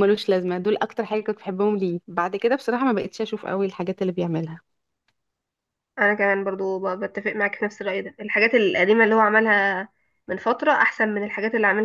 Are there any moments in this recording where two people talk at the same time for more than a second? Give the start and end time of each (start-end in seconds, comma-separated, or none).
none